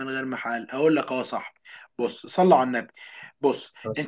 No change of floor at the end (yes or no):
yes